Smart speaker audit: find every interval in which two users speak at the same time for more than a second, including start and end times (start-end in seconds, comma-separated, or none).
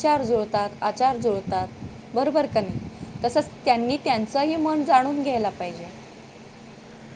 2.5-4.1